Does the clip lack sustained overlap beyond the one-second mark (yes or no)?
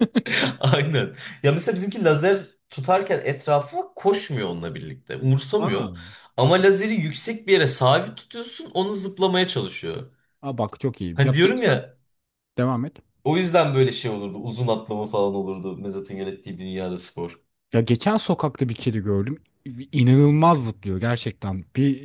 yes